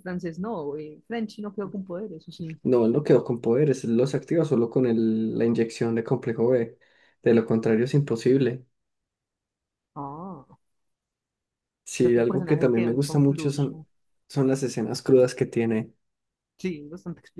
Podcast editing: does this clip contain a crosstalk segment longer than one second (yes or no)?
yes